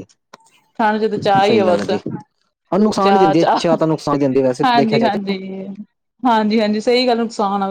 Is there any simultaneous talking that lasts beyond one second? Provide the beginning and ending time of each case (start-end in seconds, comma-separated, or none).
none